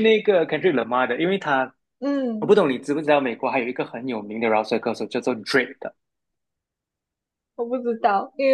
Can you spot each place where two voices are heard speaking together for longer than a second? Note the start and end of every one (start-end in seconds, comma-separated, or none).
none